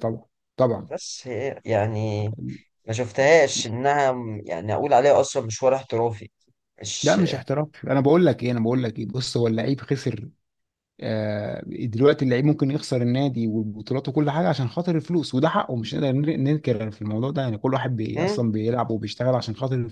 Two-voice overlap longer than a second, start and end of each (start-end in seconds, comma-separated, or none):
none